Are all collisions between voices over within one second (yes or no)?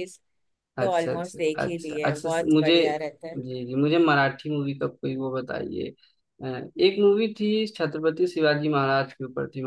no